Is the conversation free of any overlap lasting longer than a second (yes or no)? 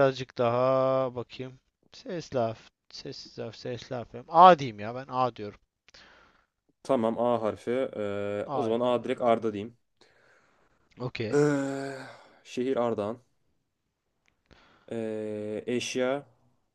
no